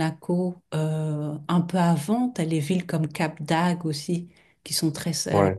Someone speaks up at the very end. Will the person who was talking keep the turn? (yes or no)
yes